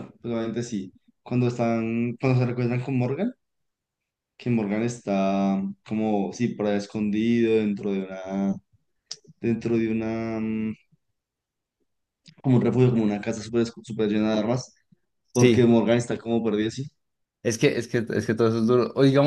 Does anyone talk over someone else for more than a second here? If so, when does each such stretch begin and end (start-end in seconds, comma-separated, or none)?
none